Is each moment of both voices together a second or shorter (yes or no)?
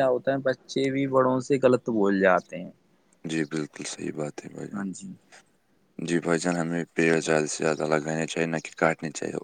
yes